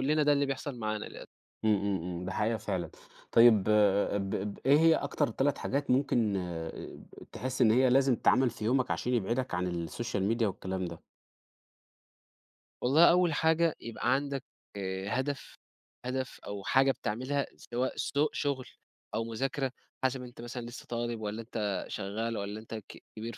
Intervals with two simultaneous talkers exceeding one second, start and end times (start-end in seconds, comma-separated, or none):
none